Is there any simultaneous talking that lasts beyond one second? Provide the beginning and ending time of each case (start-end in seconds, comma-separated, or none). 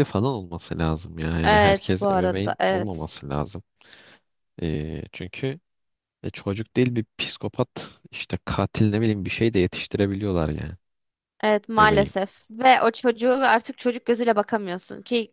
1.4-3.1